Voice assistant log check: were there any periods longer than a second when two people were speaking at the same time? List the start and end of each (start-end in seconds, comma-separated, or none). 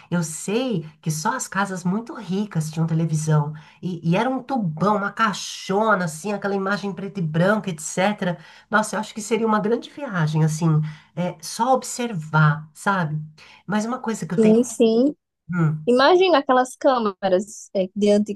none